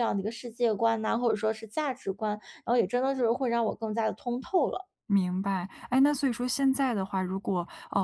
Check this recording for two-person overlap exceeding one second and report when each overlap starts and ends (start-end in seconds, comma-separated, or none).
none